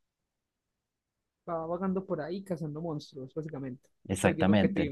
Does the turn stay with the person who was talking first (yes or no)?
no